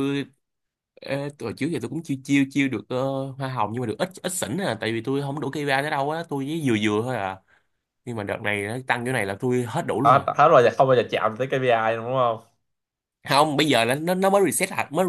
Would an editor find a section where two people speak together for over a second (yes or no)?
no